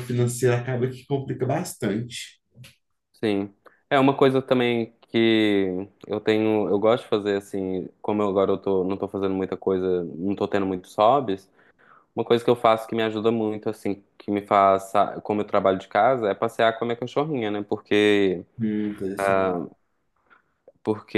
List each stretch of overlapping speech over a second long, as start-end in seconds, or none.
none